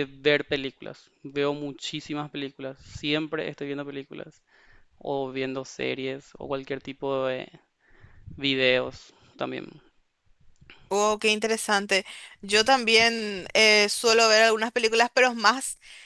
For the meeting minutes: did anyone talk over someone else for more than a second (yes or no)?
no